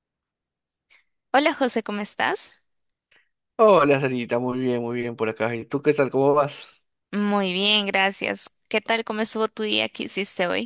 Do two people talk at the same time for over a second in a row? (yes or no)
no